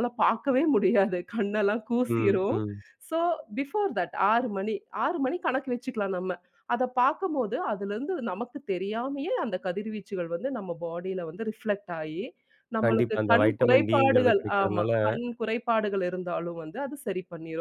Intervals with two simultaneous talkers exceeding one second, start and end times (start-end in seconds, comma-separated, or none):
12.8-14.9